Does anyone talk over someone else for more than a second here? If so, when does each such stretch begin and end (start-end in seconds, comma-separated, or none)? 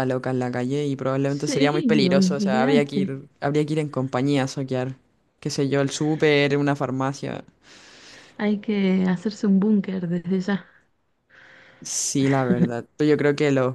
1.3-3.2